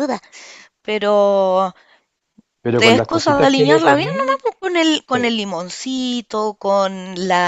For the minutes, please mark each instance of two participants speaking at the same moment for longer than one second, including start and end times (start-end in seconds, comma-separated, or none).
2.8-4.4